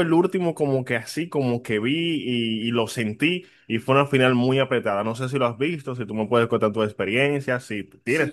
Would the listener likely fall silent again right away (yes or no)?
no